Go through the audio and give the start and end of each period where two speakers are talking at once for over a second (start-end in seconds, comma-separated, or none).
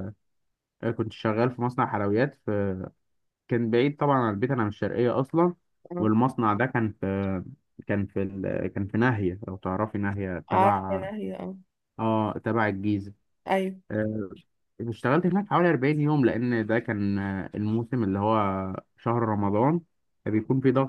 none